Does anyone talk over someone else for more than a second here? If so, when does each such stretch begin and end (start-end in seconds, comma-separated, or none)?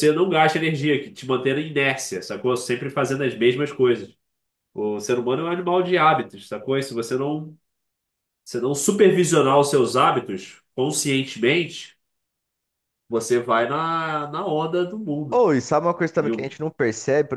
none